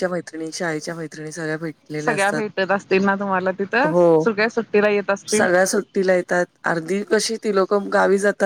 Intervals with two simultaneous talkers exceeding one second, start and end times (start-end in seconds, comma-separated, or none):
none